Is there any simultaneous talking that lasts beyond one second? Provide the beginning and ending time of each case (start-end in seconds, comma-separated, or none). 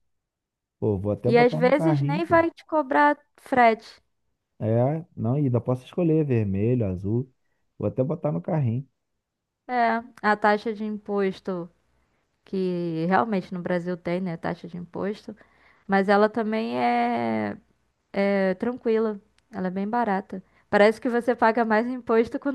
1.2-2.4